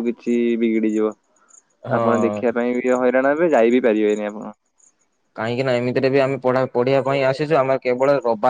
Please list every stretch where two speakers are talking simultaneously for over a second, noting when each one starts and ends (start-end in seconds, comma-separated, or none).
none